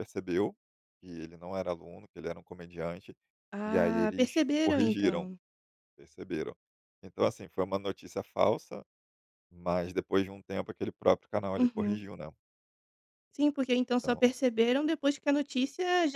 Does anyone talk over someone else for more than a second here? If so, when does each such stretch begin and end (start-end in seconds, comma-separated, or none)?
3.6-5.3